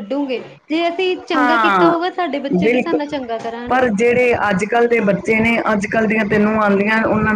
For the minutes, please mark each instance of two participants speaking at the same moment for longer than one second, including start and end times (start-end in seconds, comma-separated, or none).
none